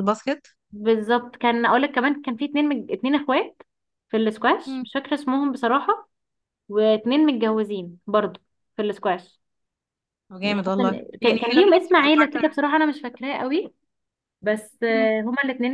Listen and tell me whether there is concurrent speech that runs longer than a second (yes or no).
yes